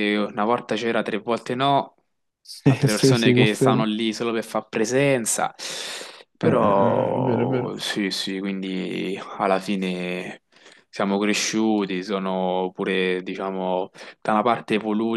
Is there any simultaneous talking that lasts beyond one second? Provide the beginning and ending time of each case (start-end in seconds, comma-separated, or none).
2.7-3.9, 6.4-7.8